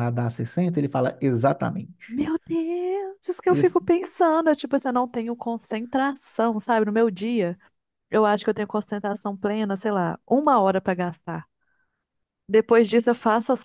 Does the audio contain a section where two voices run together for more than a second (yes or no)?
no